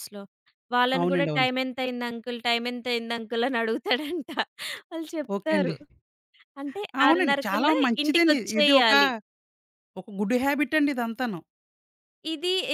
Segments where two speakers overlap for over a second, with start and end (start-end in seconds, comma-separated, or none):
7.0-8.9